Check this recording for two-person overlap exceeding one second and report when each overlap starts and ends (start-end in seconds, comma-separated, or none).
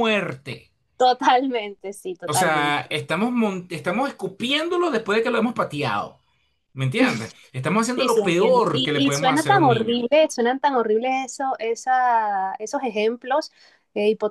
7.9-10.0